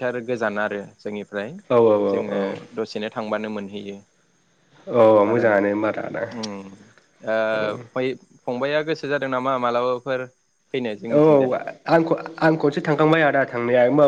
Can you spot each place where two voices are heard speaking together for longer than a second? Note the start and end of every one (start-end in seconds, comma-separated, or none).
none